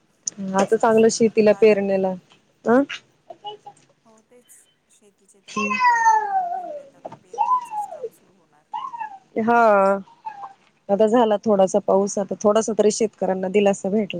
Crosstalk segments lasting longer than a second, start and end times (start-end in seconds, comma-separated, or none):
0.6-2.1